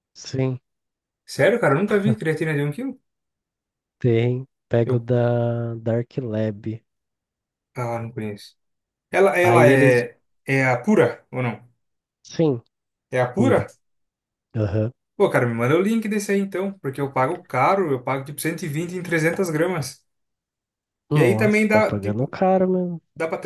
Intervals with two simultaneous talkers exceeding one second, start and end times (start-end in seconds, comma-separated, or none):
21.1-22.4